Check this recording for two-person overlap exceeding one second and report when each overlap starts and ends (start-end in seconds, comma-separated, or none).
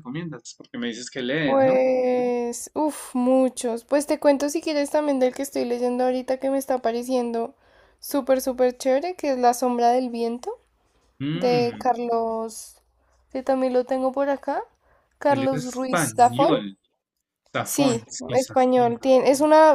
15.3-16.5, 17.6-19.0